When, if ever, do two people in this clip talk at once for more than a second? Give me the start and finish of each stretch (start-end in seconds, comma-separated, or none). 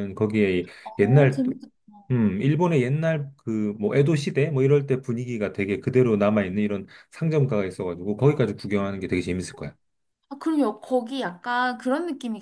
none